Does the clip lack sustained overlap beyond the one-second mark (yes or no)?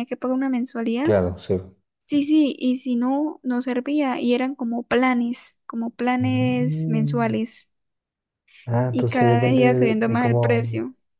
no